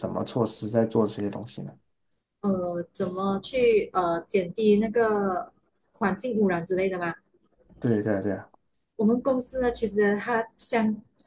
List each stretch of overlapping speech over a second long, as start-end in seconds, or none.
none